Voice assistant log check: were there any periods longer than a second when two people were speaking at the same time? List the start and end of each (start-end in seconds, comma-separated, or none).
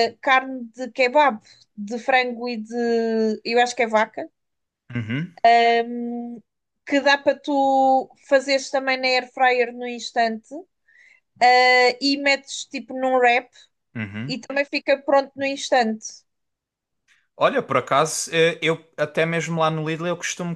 none